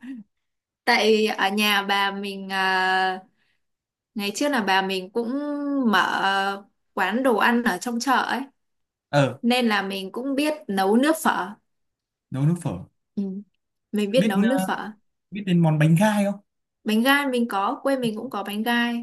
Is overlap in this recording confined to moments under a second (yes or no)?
yes